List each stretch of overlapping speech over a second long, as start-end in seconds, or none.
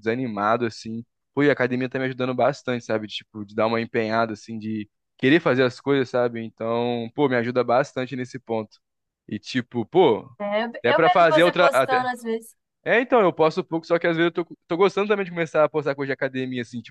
10.8-12.1